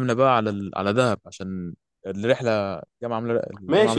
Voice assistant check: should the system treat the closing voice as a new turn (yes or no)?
yes